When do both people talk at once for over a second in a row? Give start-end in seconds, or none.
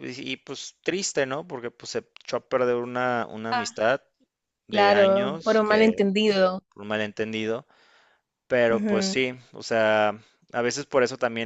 4.7-5.9